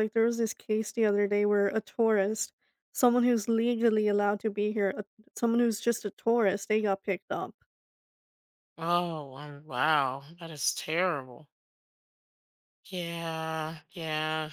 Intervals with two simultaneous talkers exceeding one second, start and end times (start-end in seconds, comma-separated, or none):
none